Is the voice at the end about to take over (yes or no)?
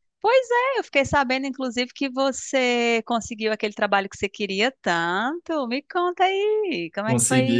yes